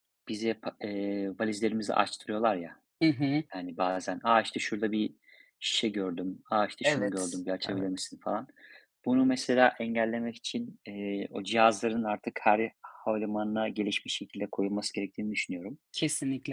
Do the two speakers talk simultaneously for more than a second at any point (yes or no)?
yes